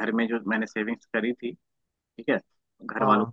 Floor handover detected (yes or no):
no